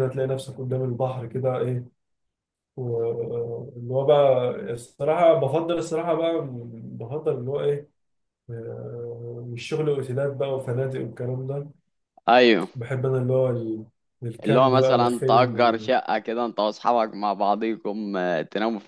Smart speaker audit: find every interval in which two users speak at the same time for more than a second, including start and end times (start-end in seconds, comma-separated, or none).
14.4-15.9